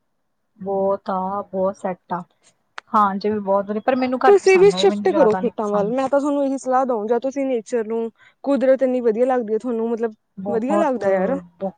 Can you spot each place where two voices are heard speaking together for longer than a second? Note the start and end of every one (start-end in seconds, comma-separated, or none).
none